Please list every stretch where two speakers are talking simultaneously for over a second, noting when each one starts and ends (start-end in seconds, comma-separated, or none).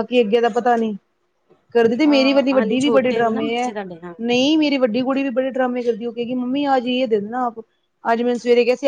2.0-3.7